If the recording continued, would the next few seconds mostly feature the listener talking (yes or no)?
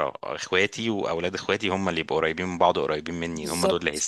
yes